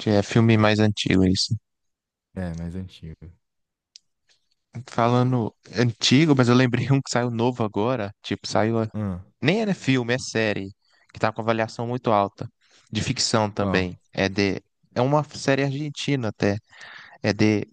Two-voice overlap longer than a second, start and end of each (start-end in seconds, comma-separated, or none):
none